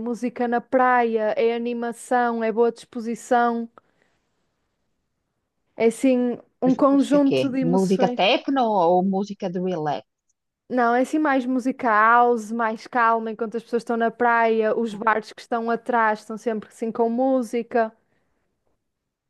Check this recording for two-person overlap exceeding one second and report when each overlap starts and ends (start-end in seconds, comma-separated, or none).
6.6-8.2